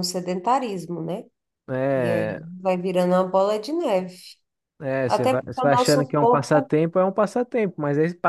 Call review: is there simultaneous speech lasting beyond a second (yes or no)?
yes